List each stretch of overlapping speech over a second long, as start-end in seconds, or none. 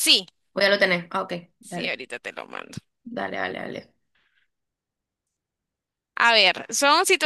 none